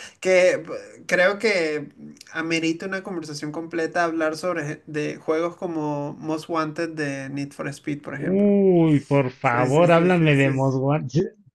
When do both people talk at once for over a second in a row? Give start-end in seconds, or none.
9.4-10.8